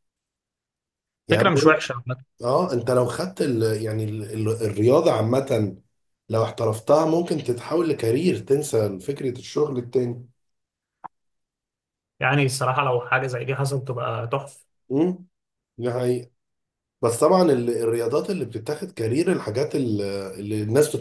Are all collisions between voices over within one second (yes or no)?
yes